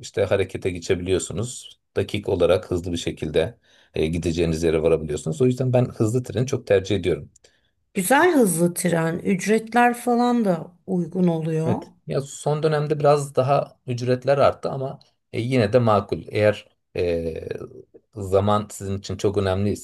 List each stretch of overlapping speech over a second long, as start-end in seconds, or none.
none